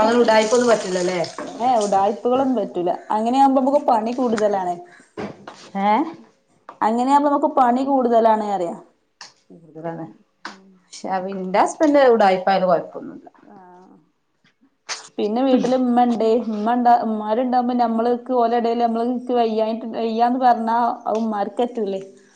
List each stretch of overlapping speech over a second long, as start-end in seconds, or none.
none